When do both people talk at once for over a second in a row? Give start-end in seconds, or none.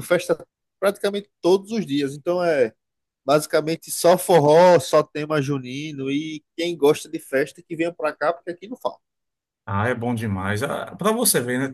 none